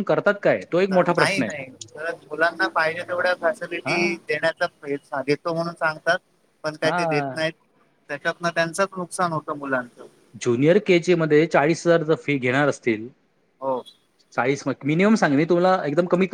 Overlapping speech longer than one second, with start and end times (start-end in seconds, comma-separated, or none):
none